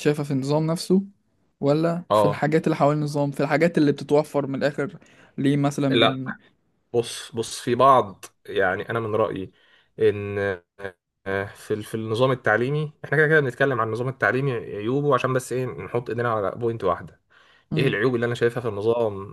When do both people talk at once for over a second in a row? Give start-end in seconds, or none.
none